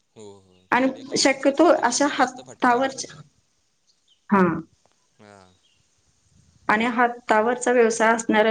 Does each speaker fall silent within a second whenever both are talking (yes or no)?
no